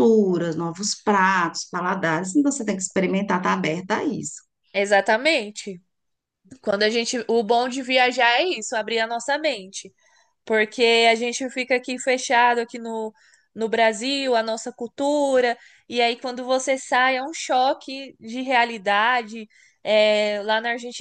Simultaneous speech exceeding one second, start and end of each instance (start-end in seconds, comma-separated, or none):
none